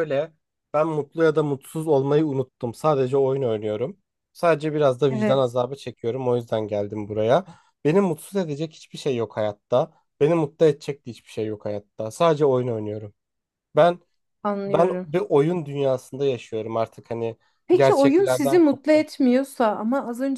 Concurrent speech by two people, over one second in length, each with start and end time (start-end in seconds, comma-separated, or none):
17.7-19.1